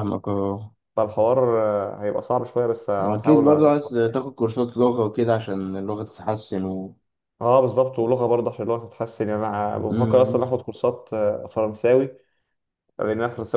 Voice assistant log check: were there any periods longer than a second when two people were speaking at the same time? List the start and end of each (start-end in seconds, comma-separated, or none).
3.0-4.2